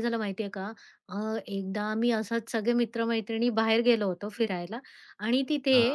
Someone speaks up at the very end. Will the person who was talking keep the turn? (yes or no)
yes